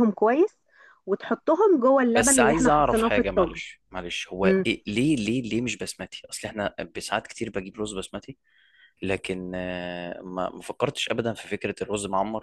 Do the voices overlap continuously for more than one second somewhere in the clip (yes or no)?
yes